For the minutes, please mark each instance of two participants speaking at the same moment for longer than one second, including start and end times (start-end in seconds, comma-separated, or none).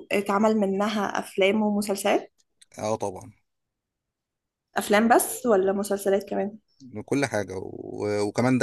none